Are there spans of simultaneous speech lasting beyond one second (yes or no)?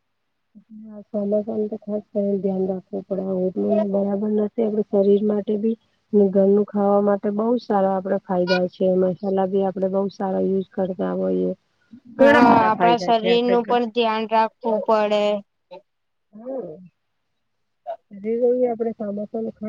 yes